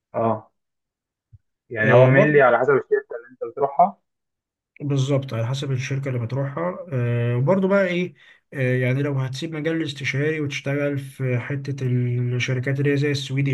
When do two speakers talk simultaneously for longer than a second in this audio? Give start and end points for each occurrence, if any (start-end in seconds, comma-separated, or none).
none